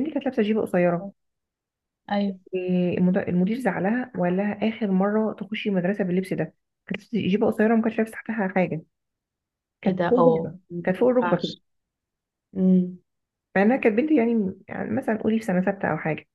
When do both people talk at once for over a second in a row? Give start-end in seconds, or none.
9.8-11.6